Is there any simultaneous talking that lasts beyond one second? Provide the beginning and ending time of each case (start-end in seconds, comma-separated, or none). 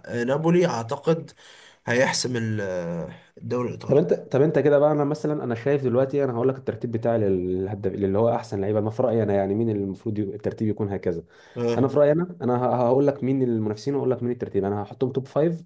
none